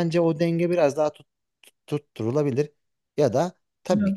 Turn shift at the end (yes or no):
no